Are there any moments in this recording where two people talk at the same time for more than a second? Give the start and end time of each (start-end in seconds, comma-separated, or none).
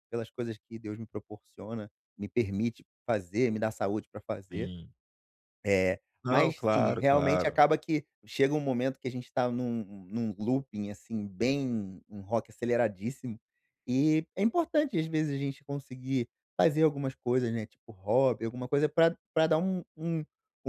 6.2-7.6